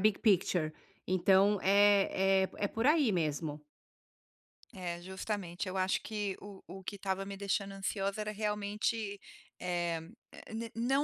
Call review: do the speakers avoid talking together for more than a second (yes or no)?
yes